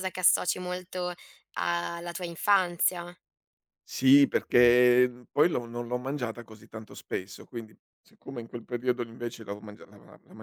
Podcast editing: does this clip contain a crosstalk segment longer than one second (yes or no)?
no